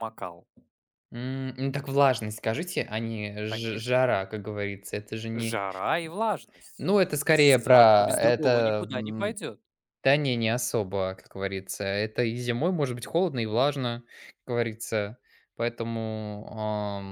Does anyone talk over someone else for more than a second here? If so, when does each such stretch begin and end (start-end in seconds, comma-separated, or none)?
6.8-9.4